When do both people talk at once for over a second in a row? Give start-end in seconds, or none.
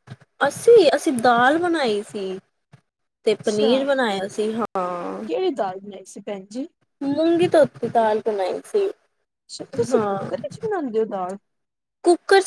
none